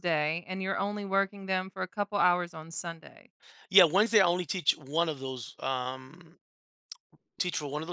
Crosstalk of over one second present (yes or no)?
no